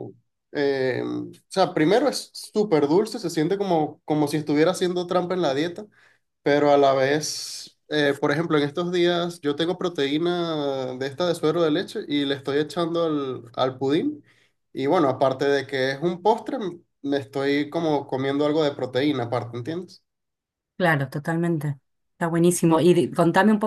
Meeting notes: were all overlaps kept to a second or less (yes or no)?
yes